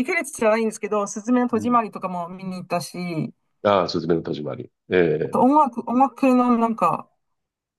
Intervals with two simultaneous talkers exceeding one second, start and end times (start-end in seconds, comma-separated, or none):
none